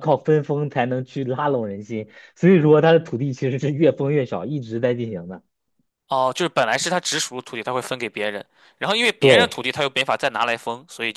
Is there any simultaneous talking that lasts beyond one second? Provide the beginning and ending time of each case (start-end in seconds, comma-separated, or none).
none